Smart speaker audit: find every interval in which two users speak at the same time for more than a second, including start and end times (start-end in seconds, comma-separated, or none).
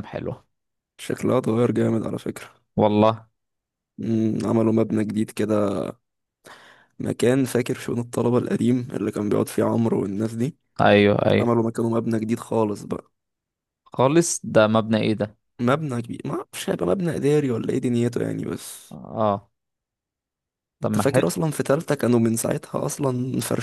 none